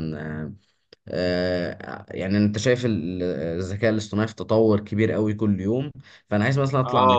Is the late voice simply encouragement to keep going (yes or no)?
yes